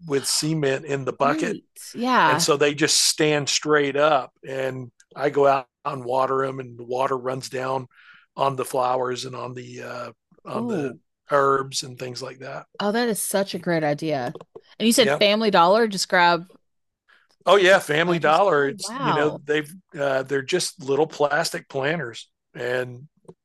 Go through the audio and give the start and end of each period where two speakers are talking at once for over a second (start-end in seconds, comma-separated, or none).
18.0-19.4